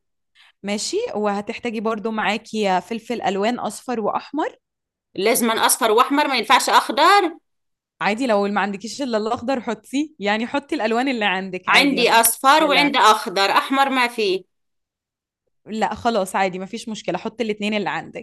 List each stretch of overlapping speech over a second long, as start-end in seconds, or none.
11.7-12.9